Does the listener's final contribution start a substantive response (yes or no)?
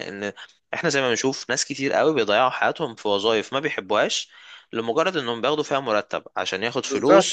yes